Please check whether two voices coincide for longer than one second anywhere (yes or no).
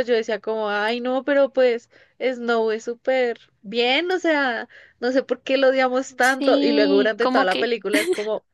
yes